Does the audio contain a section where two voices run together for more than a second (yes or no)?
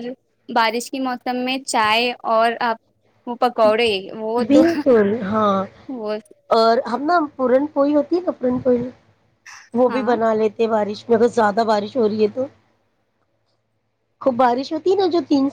no